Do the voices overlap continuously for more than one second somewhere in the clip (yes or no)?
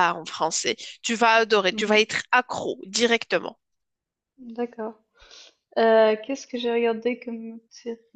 no